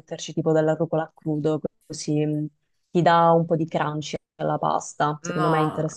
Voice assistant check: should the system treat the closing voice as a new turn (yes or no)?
yes